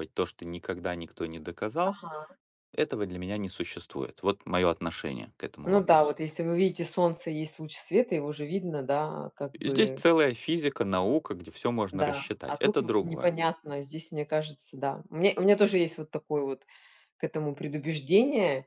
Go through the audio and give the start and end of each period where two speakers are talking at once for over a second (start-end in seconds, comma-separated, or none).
11.9-13.3